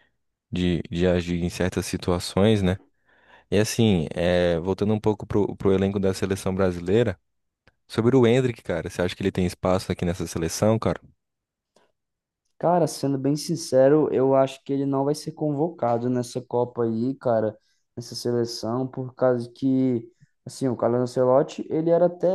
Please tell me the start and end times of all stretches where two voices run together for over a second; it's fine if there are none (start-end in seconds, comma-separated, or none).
none